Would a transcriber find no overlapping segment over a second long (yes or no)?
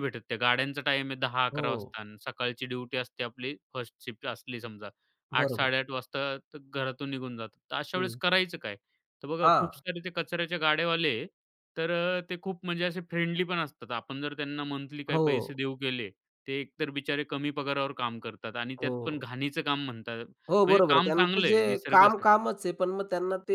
no